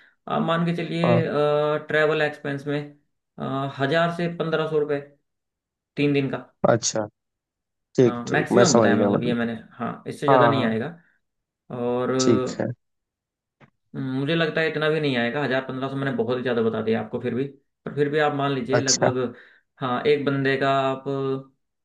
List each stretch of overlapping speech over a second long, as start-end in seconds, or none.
8.0-9.4